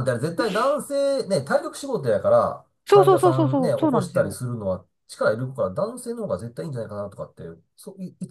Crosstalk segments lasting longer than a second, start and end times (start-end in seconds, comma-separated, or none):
2.9-4.4